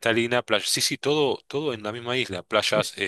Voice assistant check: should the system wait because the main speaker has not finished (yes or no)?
yes